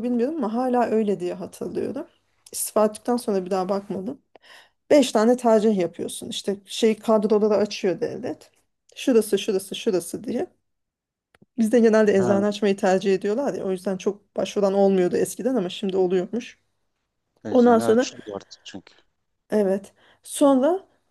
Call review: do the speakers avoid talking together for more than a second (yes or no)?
yes